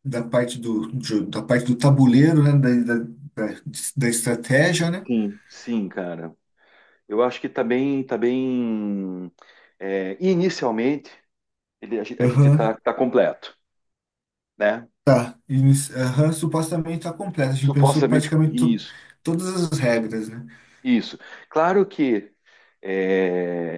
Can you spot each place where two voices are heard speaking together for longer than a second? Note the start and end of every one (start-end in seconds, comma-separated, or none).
17.6-18.8